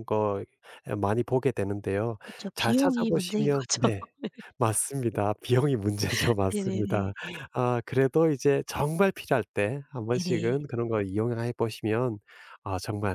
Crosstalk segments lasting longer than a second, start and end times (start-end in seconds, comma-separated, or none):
2.5-4.1